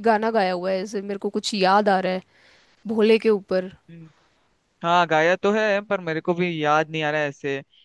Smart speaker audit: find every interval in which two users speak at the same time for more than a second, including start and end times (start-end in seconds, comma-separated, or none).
none